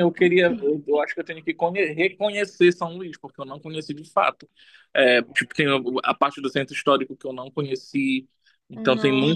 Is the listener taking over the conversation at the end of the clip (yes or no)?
no